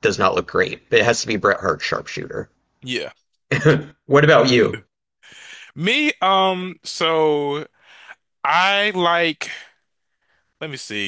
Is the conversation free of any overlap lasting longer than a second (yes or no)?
yes